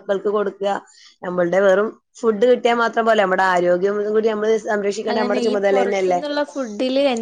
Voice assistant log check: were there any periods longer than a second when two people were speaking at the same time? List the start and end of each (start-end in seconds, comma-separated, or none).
none